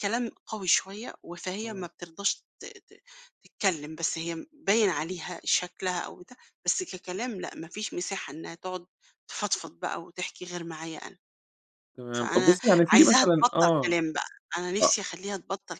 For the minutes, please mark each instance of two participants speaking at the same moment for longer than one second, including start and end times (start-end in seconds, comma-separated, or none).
12.2-14.0